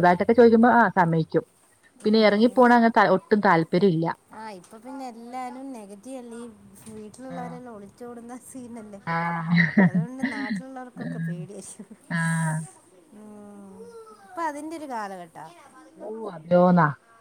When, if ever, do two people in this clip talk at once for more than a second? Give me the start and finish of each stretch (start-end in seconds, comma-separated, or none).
none